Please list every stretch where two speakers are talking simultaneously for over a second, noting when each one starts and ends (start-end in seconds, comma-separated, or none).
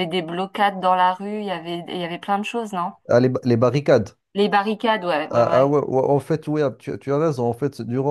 none